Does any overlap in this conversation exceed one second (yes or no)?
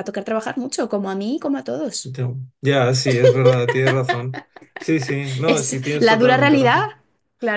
yes